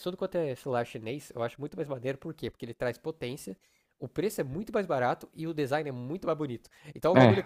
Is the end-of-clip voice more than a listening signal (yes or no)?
no